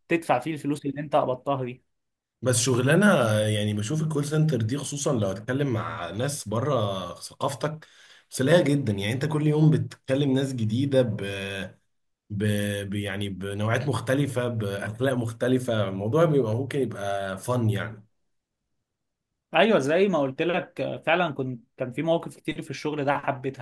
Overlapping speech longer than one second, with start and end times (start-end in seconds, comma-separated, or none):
none